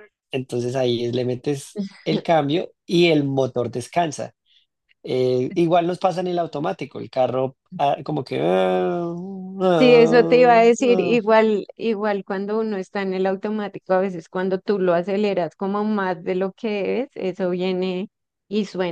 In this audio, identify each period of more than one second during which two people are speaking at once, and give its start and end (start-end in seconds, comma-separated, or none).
9.7-11.2